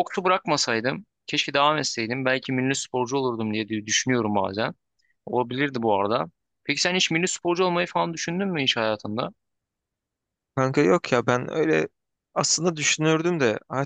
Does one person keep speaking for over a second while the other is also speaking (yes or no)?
no